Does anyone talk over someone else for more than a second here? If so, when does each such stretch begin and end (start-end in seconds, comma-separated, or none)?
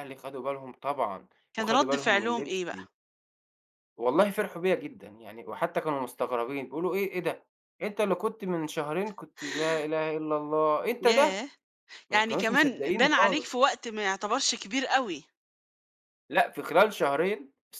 1.6-2.8, 12.1-13.6